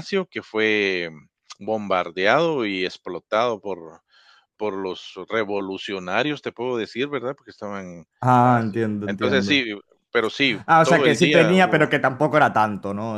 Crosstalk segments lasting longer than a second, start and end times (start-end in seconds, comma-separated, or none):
8.4-9.6, 10.7-11.9